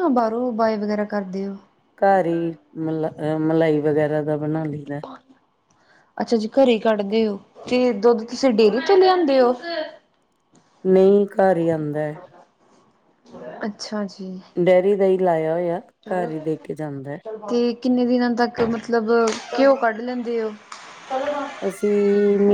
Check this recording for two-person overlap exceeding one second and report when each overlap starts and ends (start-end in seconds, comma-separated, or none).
none